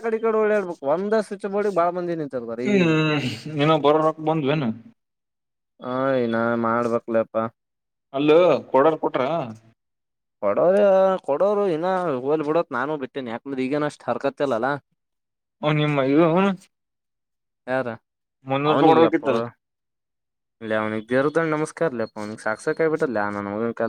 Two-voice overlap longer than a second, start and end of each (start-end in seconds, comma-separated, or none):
none